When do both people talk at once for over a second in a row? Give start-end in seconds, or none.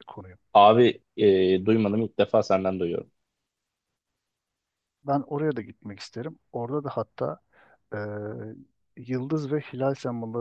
none